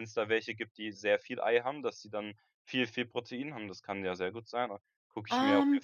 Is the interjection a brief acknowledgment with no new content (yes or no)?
no